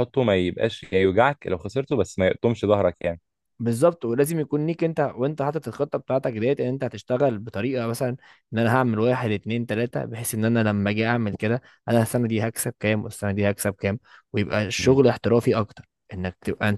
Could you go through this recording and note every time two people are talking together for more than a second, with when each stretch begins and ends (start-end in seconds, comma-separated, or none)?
none